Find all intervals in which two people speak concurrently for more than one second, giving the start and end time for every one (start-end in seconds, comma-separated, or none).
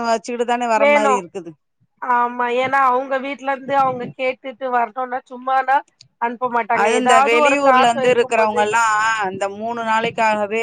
6.8-8.6